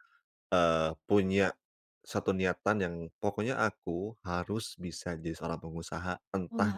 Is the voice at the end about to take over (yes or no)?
no